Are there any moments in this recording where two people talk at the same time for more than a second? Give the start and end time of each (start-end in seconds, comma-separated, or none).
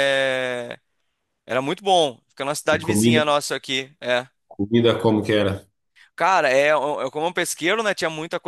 none